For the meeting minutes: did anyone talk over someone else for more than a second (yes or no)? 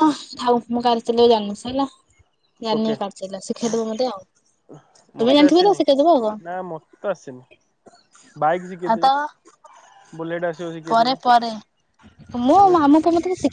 no